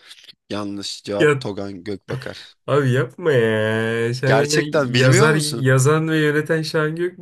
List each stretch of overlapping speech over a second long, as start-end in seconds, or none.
4.2-5.7